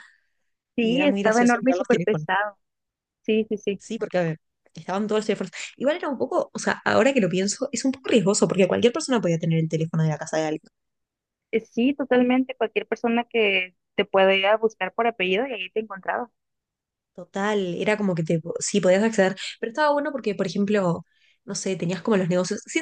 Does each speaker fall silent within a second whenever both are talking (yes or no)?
no